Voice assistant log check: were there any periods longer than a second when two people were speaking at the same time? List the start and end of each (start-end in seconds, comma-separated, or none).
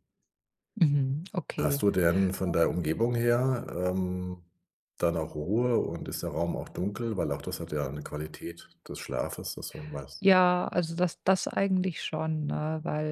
none